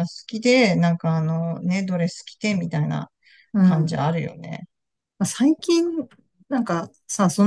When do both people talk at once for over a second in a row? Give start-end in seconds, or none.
none